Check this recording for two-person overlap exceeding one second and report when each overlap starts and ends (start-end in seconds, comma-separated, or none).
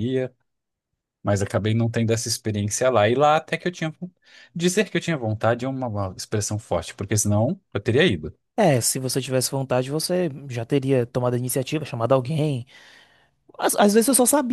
none